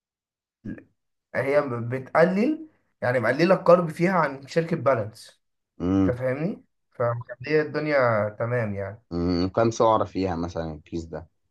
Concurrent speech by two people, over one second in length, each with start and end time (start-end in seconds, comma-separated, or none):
none